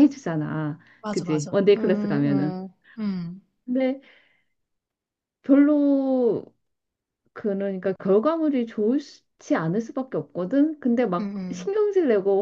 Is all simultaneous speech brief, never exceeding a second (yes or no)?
no